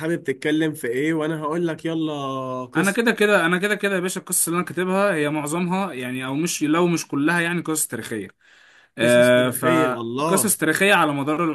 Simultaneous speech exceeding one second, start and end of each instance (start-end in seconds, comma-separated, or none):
none